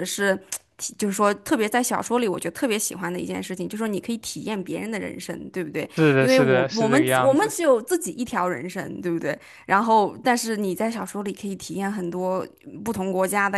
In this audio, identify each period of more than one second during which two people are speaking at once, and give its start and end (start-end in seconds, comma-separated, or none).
6.0-7.5